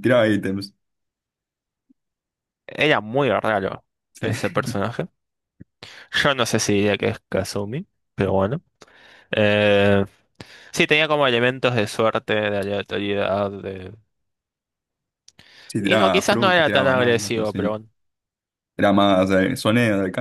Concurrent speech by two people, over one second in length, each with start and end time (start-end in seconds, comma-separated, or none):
15.8-17.7